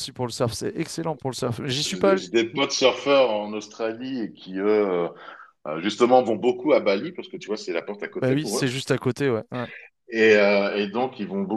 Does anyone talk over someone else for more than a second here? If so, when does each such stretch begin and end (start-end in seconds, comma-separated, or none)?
none